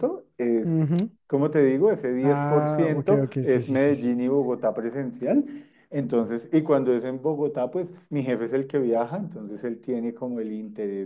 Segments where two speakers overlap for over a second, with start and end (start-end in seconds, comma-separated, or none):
2.2-4.1